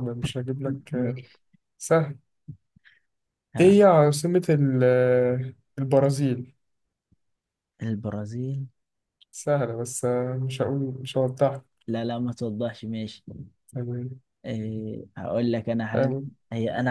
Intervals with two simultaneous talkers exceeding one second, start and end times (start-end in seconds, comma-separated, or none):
none